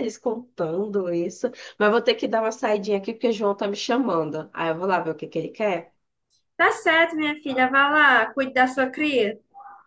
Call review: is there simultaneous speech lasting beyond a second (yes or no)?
no